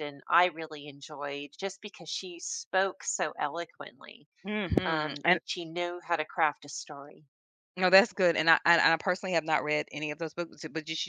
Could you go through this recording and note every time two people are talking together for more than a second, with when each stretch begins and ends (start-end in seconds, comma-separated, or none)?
none